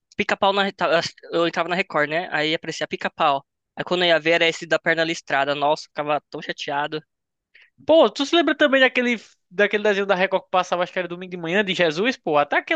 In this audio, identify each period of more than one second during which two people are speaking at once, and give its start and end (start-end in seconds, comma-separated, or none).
none